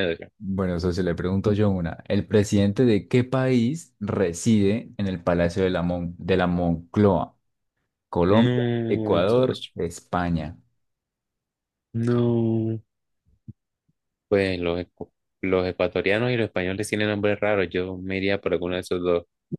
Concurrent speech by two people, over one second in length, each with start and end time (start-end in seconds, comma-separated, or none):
8.3-9.7